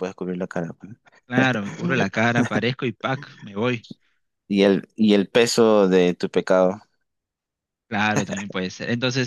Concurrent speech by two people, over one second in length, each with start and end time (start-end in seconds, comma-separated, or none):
none